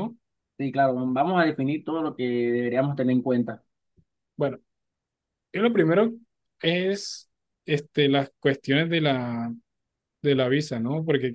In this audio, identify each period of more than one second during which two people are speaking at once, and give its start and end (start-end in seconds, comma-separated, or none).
none